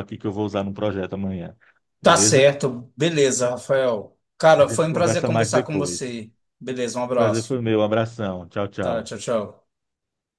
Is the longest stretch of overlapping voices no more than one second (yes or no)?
no